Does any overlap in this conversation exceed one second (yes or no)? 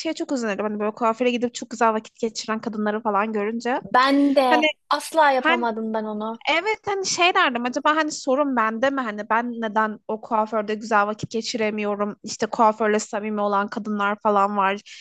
no